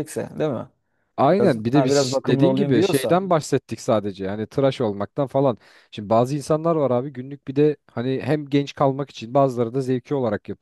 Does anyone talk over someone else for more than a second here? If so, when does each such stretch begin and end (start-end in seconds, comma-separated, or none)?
1.4-3.2